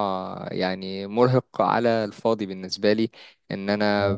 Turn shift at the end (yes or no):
no